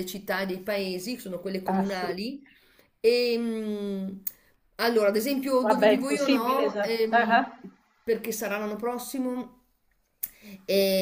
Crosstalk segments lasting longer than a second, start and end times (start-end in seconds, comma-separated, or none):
5.6-7.5